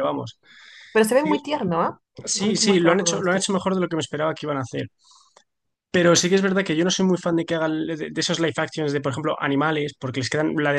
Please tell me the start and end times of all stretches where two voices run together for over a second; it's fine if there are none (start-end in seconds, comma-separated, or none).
2.4-3.7